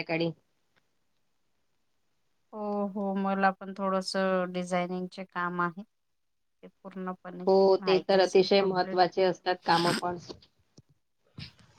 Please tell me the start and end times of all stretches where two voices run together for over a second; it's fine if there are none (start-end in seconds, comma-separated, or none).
7.5-9.0